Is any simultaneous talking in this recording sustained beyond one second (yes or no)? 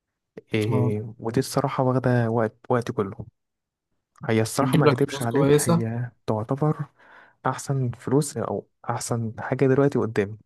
yes